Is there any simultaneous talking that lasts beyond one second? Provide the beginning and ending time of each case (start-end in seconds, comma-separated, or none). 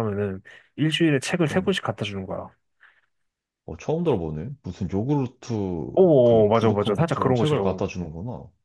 5.9-7.8